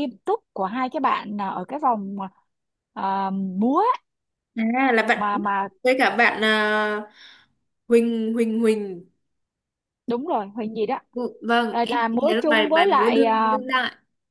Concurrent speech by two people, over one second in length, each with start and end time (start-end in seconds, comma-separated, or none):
11.7-13.6